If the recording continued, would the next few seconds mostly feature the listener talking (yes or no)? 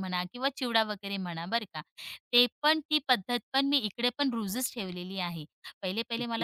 no